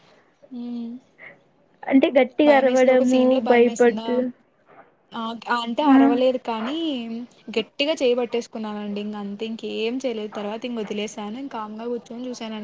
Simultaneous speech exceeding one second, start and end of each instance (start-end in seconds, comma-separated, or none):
2.5-4.2